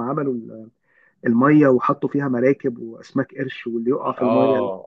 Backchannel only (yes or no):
no